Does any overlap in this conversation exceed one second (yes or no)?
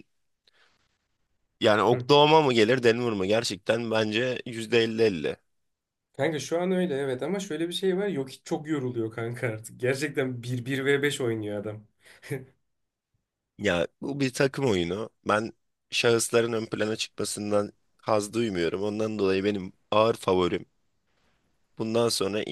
no